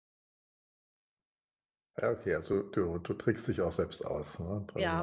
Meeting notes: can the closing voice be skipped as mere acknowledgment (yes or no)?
no